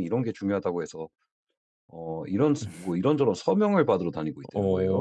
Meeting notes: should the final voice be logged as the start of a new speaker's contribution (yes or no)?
yes